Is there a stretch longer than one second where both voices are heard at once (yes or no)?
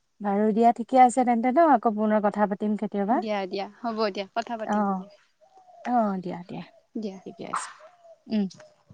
no